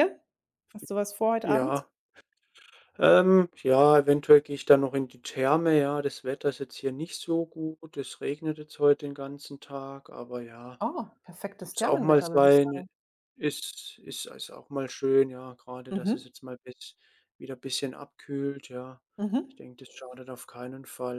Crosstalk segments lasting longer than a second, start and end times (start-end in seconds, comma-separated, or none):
11.6-12.8